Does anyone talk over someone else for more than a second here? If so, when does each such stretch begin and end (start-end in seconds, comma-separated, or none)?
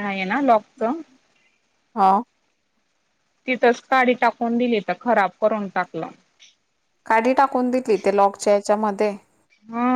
none